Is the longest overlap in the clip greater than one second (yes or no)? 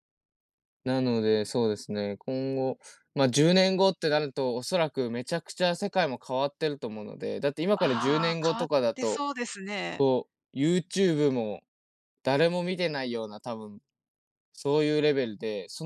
yes